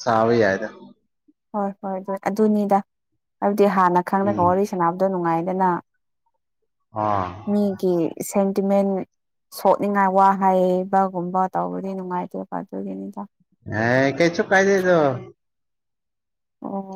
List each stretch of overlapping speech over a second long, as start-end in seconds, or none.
none